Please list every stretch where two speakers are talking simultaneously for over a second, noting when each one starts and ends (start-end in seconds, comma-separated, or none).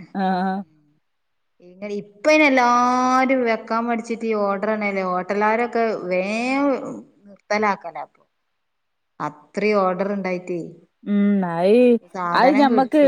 none